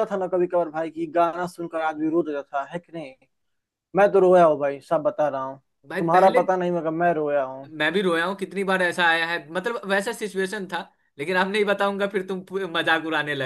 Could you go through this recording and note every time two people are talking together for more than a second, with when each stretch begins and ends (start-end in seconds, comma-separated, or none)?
none